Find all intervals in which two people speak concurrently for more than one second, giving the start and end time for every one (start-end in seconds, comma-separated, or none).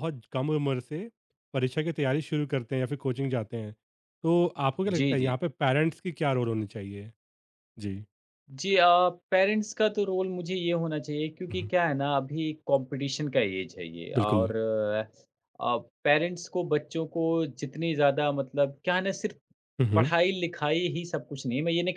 none